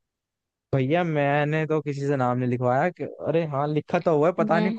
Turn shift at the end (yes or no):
no